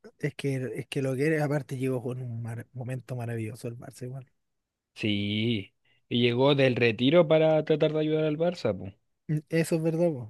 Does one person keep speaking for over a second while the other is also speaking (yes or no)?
no